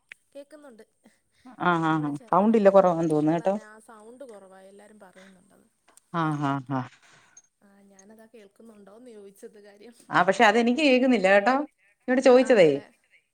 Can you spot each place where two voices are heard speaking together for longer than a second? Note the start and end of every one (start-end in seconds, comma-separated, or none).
1.9-3.5